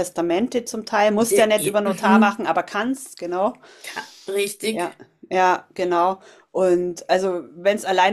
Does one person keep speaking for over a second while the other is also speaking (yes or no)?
yes